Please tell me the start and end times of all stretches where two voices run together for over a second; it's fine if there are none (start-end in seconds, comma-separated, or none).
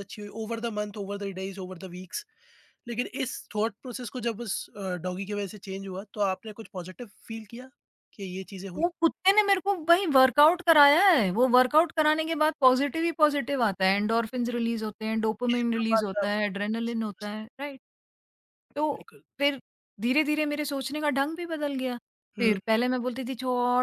15.5-17.3